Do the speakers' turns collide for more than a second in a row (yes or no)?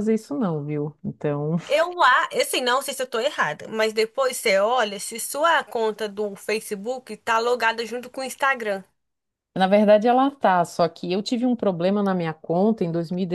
no